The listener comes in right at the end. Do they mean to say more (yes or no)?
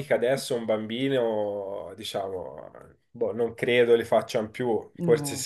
no